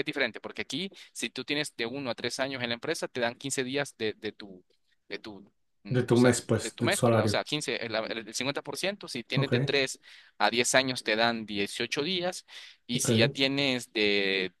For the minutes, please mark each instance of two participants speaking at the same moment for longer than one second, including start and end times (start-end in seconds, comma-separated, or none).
6.0-7.4